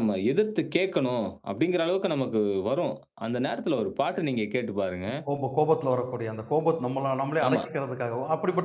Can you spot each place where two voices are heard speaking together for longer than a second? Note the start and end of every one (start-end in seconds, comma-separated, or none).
none